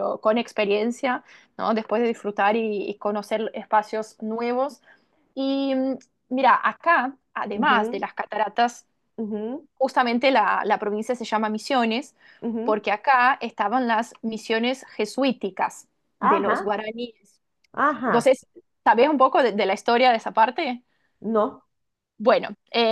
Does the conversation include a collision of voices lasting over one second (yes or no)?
no